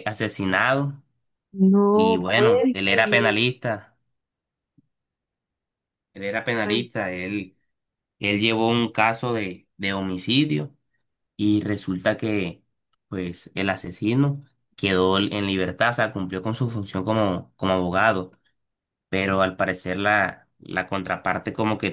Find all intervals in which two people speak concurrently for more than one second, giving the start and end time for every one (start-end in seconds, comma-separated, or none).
1.9-3.4